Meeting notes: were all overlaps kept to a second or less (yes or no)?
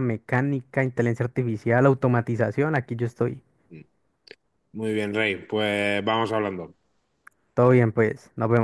yes